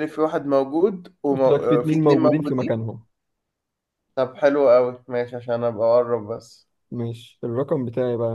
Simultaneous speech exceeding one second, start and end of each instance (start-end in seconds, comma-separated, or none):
1.3-2.7